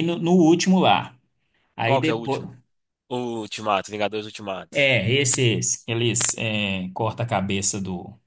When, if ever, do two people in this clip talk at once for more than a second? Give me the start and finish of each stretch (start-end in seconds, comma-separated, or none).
none